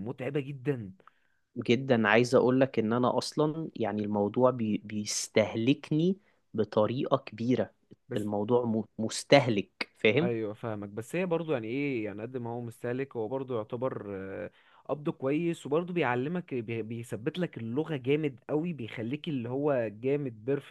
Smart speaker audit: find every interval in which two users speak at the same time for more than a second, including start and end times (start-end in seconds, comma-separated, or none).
none